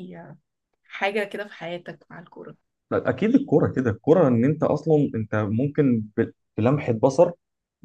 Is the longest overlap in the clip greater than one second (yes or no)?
no